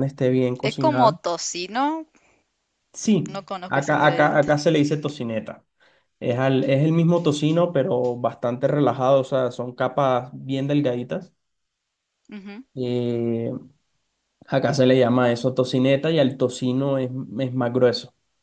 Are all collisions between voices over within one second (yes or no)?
no